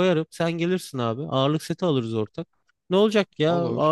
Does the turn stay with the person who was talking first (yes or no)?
yes